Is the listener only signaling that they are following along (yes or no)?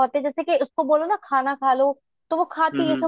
yes